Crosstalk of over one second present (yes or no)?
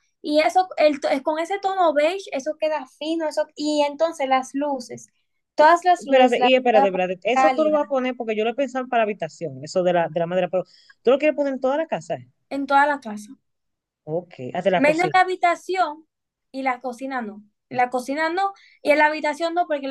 yes